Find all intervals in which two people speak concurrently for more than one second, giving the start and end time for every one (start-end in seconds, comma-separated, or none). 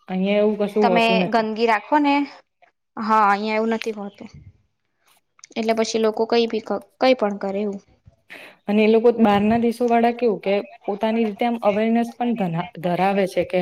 none